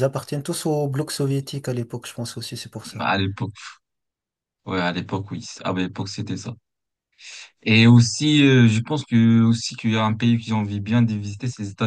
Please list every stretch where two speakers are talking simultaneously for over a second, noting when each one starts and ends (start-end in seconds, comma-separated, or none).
none